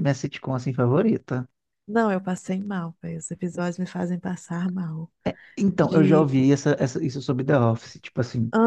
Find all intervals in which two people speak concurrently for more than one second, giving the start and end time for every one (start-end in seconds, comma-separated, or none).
none